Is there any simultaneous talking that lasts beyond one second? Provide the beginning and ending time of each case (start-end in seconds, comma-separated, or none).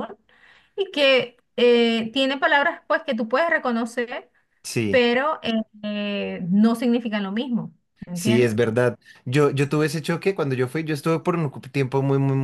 none